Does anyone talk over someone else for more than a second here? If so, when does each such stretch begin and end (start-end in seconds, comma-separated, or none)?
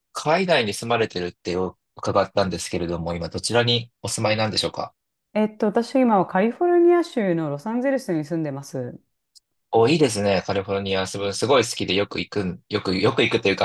none